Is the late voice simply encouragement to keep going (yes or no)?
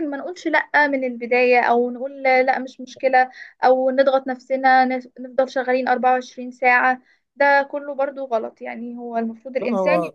yes